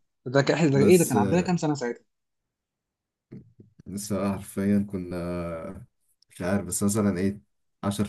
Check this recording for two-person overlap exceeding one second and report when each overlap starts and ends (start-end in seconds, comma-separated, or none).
none